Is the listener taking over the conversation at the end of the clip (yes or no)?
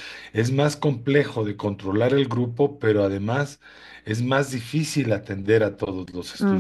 yes